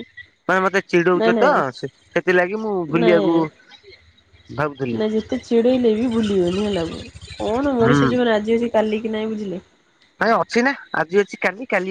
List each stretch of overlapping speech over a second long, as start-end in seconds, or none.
none